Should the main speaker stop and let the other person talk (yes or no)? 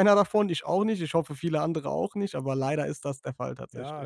yes